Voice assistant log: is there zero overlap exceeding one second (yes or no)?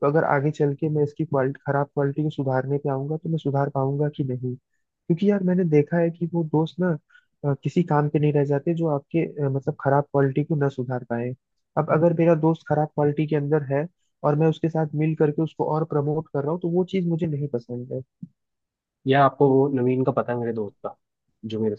yes